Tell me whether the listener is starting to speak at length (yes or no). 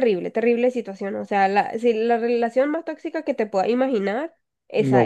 yes